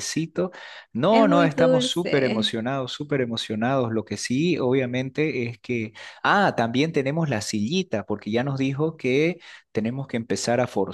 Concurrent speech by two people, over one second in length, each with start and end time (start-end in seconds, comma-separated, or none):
1.1-2.6